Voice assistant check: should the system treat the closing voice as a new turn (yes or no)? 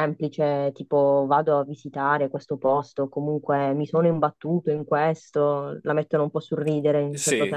yes